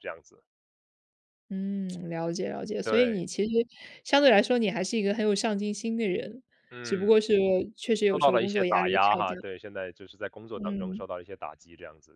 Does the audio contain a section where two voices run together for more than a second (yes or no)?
yes